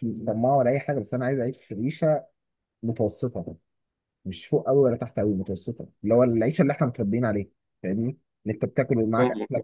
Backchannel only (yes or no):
yes